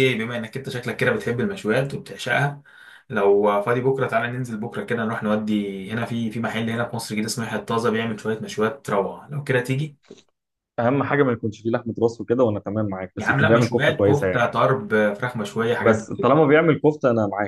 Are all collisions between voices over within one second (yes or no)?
no